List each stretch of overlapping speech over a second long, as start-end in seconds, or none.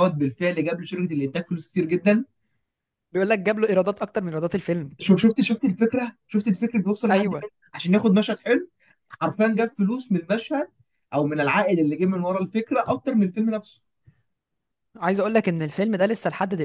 none